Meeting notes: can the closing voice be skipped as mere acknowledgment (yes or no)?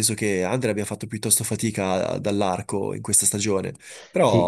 no